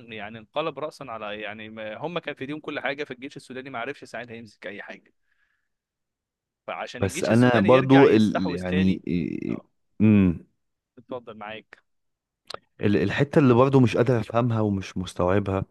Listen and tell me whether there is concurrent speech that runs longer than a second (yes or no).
yes